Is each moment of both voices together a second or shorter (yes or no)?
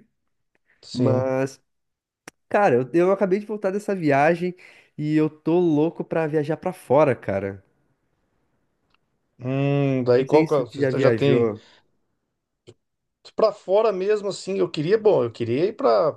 no